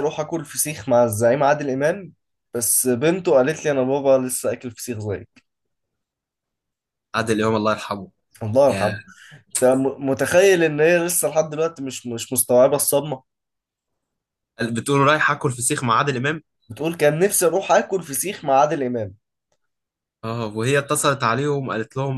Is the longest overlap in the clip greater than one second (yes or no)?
no